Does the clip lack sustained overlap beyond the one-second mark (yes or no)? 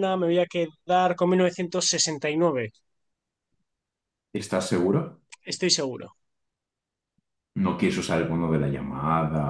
yes